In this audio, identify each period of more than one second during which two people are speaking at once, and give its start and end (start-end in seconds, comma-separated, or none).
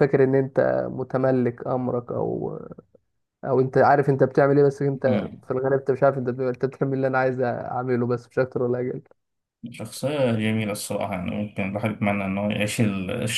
none